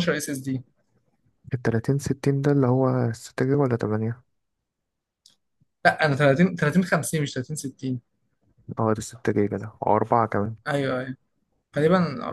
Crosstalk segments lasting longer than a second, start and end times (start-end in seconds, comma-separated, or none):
none